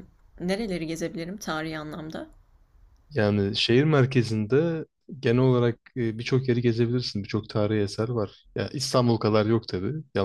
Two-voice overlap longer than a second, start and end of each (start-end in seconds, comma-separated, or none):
none